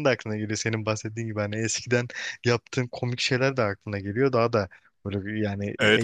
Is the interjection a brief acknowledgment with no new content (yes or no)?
no